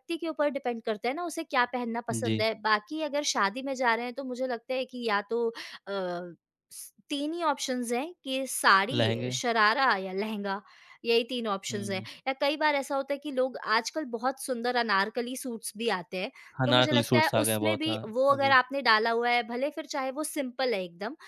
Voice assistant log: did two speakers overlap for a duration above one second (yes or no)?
yes